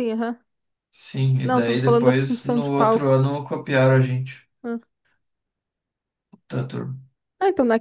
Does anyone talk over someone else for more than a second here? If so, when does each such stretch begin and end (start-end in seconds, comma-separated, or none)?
1.4-3.2